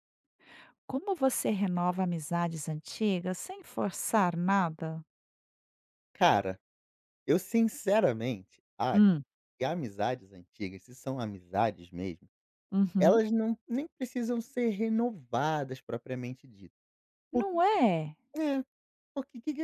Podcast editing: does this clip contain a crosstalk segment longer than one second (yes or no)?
no